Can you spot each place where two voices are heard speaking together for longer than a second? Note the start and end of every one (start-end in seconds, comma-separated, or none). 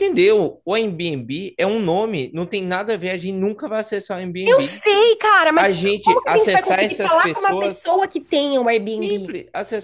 5.6-7.8